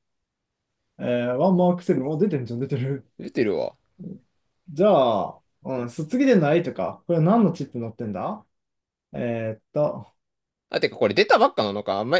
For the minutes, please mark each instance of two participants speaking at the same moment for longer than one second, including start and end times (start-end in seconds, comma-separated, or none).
none